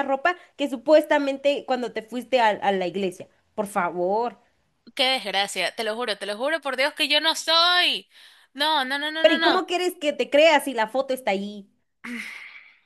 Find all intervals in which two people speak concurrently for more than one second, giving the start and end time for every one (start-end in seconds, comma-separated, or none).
none